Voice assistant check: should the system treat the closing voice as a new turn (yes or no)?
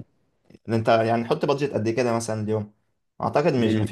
no